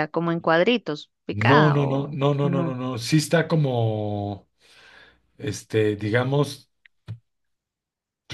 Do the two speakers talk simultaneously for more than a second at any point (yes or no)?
yes